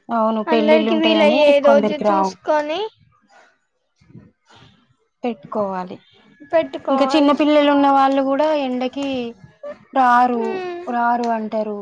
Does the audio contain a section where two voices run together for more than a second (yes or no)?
yes